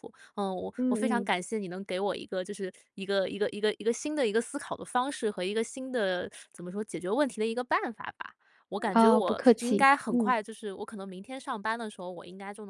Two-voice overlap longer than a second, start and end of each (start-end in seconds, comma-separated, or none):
8.9-10.3